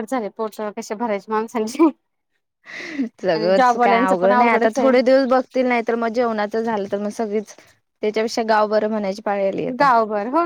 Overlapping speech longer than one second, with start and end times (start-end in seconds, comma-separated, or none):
3.3-4.9